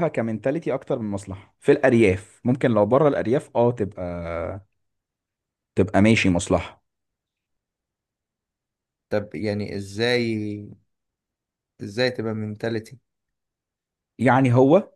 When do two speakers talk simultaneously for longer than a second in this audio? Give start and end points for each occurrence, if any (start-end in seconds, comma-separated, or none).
none